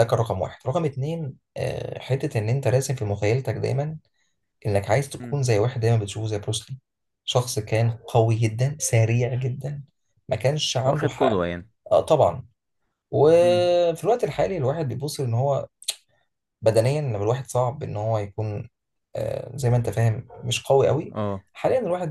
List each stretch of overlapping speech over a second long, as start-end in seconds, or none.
none